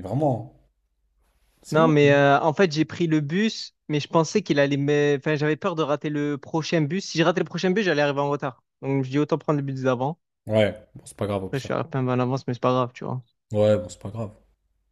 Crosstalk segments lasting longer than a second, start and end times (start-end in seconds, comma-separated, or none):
none